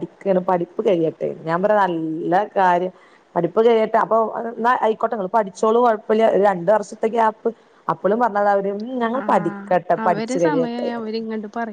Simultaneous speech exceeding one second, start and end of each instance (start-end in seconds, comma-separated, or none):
9.2-10.9